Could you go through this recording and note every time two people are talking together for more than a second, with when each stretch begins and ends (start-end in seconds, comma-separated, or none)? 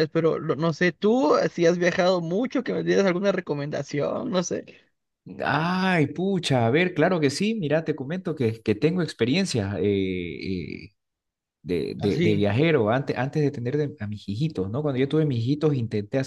none